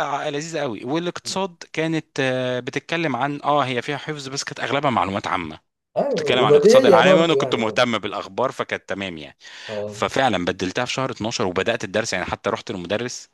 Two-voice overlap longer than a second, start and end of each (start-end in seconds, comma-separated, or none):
6.1-7.8